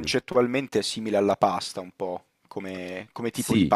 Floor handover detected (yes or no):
yes